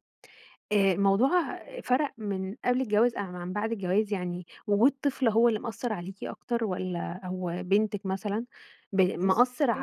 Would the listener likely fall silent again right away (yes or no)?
yes